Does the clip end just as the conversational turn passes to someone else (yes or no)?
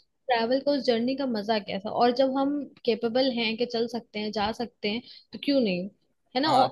no